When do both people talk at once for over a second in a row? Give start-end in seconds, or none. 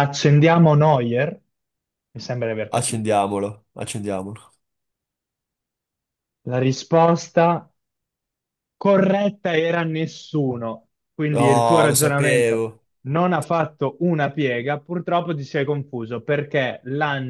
11.3-12.7